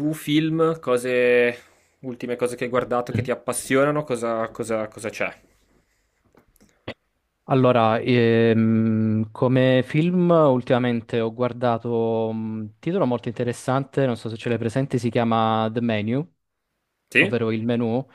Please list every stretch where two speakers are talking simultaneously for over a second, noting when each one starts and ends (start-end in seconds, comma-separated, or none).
none